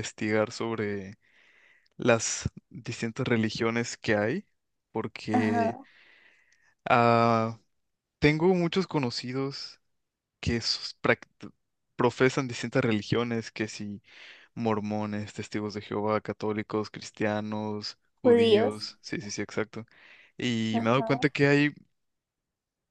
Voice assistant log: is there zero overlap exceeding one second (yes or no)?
yes